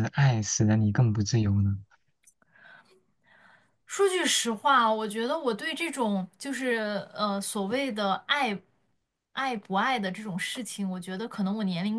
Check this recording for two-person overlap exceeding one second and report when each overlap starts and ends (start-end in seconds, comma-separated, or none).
none